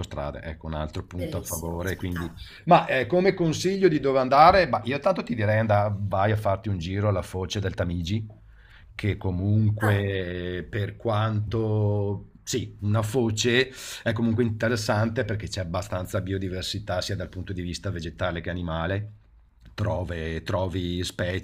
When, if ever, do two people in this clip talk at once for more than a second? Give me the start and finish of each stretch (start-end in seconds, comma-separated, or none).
1.1-2.4